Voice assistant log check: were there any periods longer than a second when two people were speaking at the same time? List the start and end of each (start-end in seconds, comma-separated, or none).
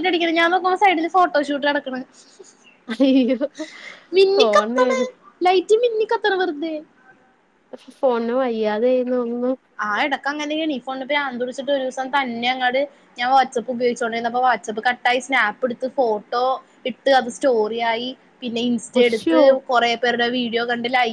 none